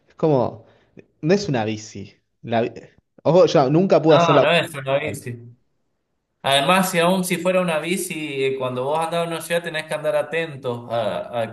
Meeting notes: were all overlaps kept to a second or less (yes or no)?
no